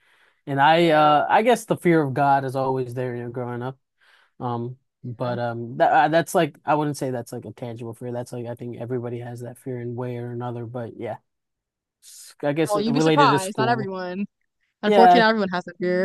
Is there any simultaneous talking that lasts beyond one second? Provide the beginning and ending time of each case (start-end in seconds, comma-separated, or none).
12.7-13.9